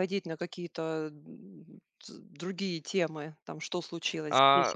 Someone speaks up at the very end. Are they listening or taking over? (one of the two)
taking over